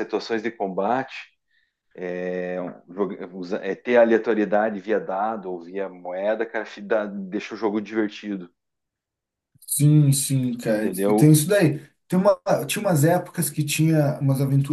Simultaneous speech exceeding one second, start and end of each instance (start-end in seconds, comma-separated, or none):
none